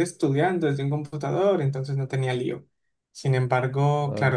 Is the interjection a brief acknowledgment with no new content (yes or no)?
yes